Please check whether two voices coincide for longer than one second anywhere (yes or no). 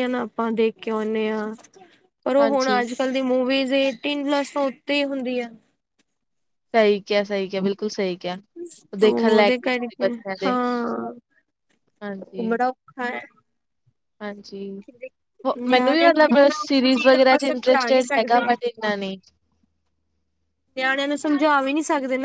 yes